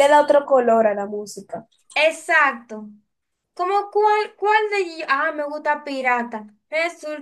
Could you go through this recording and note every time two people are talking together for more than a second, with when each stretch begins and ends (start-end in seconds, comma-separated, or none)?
none